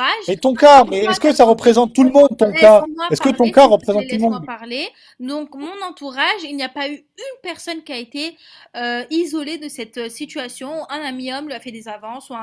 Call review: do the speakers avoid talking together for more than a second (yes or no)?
no